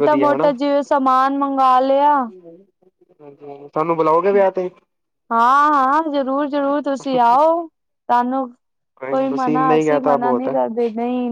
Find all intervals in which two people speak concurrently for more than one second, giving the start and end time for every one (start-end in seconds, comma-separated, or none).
9.2-10.5